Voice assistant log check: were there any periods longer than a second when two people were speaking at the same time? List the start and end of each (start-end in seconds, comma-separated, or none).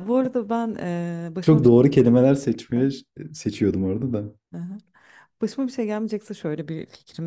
1.4-2.9